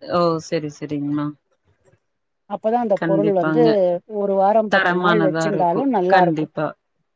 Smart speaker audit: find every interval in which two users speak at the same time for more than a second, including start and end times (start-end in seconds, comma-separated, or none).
4.7-6.5